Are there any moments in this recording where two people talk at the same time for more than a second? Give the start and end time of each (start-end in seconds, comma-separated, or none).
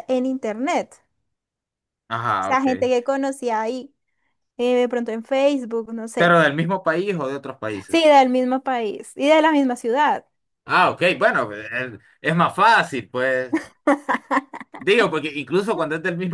none